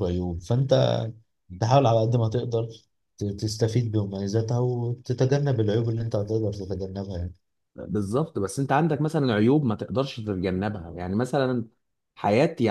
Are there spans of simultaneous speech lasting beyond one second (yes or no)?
no